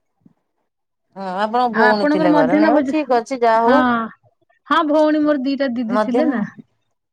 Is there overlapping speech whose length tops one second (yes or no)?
yes